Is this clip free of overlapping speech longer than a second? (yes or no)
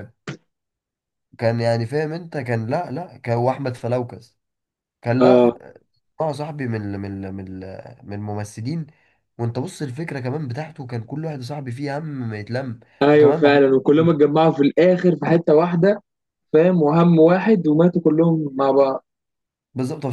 yes